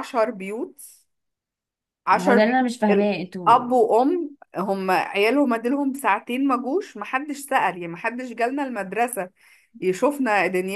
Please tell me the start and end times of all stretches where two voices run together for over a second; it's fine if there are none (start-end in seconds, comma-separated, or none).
2.1-3.7